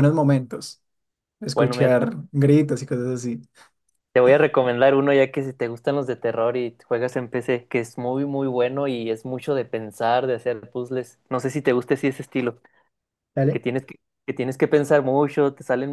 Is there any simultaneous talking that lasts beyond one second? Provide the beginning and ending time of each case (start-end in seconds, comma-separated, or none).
none